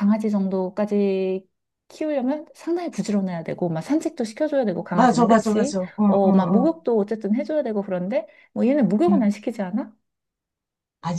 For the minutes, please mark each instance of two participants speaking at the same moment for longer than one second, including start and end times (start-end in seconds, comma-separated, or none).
4.9-6.7